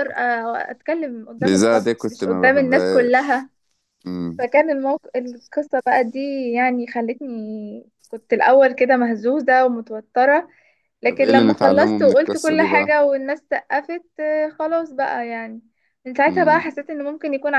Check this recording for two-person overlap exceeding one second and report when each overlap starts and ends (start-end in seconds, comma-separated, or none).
1.4-3.5, 11.1-12.9